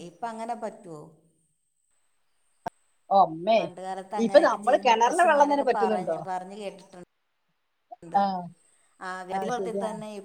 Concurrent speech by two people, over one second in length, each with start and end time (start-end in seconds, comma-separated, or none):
4.2-6.2